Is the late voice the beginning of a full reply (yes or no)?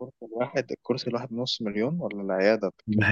yes